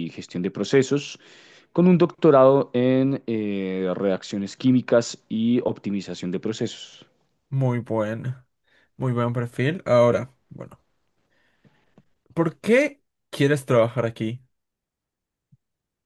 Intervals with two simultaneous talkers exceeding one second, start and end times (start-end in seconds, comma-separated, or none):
none